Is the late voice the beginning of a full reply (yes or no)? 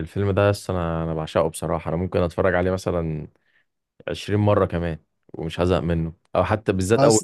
no